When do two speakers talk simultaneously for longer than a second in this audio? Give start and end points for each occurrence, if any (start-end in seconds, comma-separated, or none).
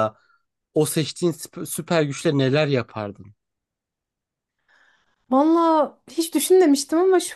none